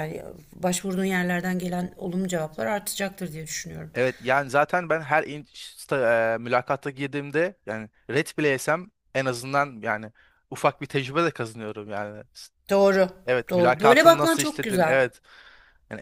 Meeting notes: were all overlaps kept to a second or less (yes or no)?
no